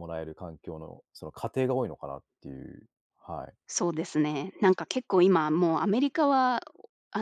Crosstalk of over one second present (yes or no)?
no